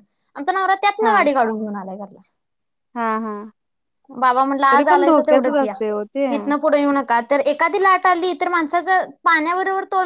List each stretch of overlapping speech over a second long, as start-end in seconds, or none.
4.7-6.3